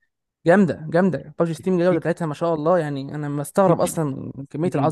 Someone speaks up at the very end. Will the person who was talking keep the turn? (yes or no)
no